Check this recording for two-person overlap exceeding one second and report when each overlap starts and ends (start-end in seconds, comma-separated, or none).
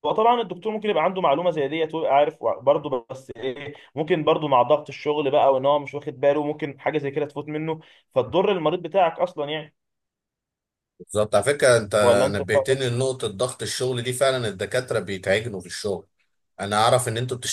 none